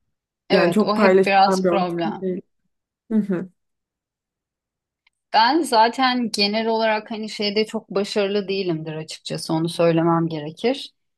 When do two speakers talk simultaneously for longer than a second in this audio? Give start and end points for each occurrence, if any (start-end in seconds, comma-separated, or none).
0.5-2.2